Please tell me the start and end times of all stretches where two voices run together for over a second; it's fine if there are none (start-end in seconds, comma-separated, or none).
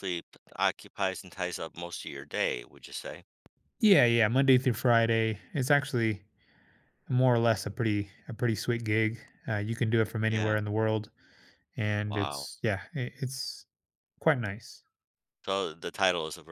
none